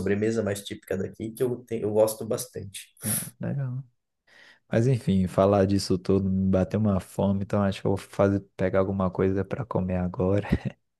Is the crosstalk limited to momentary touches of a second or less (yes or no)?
yes